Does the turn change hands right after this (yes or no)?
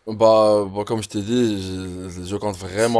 yes